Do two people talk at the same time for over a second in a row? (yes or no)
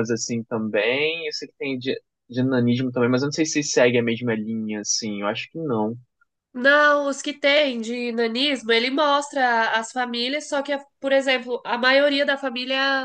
no